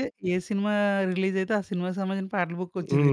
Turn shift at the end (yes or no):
yes